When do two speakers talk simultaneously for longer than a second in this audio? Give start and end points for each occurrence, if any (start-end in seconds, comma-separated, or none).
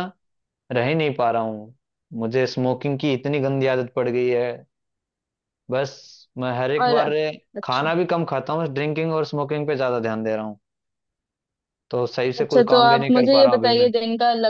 12.4-13.9